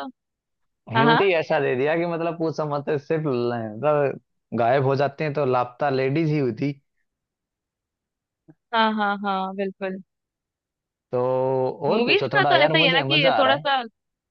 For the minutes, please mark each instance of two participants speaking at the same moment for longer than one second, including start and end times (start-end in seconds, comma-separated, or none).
11.9-13.7